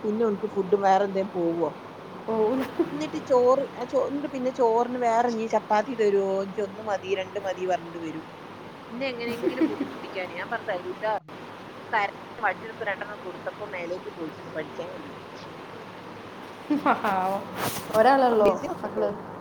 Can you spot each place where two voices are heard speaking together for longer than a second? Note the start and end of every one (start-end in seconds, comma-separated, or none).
none